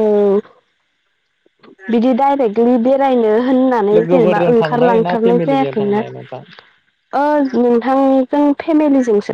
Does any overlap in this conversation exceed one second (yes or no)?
yes